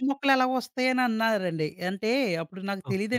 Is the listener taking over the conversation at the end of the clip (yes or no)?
no